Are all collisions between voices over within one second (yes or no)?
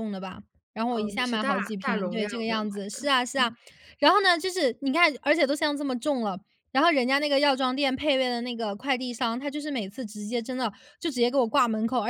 no